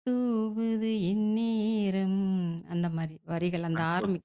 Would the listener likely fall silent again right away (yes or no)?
no